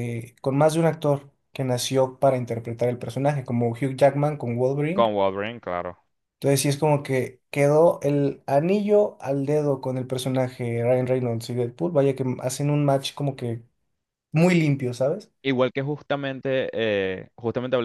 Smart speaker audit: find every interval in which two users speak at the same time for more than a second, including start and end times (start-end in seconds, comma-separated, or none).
none